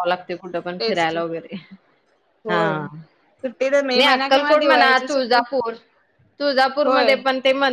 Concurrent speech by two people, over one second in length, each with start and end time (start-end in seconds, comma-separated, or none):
4.0-5.4